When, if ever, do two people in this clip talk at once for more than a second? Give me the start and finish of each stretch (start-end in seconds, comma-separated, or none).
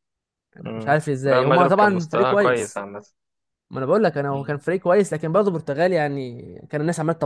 0.7-2.8